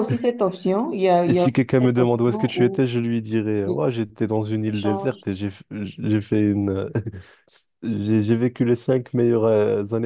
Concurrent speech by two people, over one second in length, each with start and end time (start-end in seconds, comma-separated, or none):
1.2-2.8